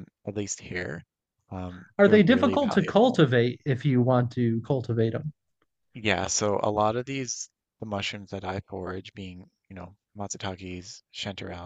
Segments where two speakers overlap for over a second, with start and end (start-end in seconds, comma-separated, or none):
2.0-3.2